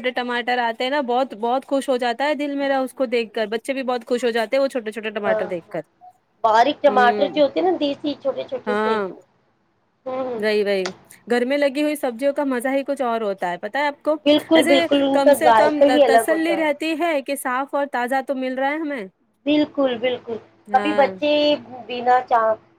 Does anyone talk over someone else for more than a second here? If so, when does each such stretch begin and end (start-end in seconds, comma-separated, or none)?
14.5-16.6